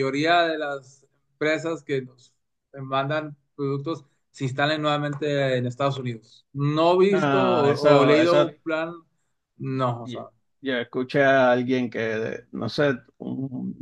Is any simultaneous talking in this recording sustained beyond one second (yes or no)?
yes